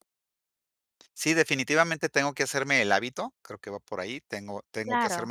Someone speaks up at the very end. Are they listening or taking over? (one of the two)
listening